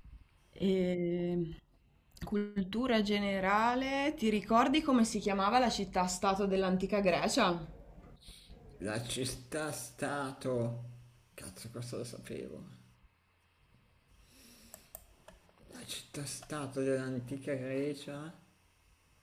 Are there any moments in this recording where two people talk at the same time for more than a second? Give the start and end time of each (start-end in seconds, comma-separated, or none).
none